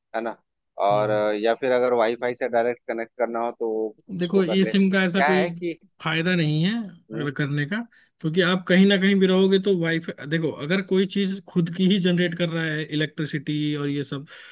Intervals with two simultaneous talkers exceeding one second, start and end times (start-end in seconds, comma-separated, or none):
4.2-5.4